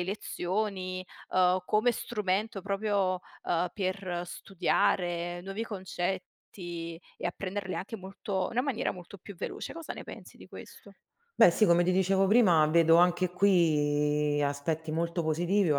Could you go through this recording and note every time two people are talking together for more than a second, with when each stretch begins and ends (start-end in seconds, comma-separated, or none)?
none